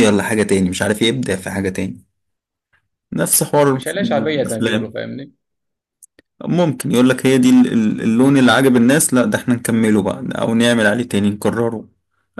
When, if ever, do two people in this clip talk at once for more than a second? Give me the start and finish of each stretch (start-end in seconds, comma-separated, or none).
none